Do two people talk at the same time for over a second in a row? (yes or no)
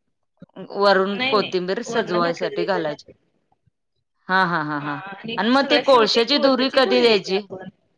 yes